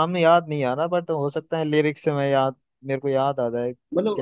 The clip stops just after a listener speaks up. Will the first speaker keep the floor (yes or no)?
no